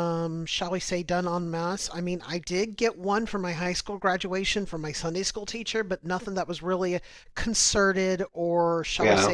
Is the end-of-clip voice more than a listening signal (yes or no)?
yes